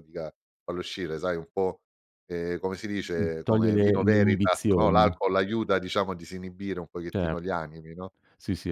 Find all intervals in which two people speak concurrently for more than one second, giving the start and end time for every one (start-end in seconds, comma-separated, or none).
3.1-5.1